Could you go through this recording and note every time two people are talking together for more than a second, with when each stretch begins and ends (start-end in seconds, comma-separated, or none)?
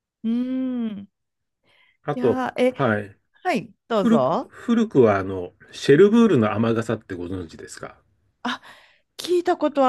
none